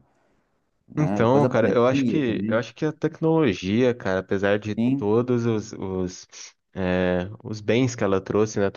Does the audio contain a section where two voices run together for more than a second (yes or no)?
yes